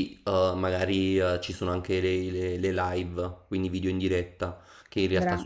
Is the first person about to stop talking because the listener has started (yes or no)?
no